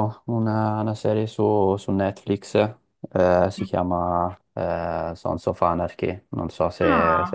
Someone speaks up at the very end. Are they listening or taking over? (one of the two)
taking over